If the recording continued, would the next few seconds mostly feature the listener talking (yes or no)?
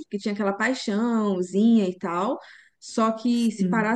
no